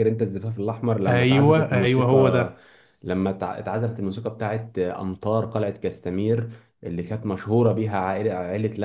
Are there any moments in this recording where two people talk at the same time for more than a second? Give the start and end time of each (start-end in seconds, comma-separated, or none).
1.1-2.5